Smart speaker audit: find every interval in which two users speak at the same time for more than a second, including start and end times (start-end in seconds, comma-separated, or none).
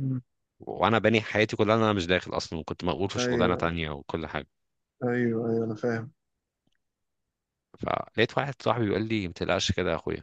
none